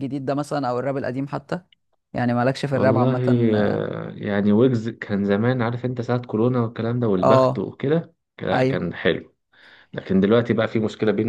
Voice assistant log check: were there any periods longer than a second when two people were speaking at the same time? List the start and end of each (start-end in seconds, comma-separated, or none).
none